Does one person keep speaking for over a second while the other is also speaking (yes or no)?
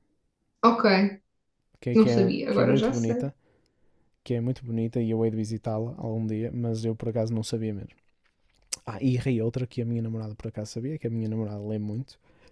yes